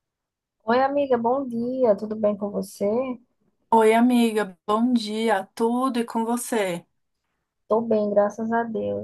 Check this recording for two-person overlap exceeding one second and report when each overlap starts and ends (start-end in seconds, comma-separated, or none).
none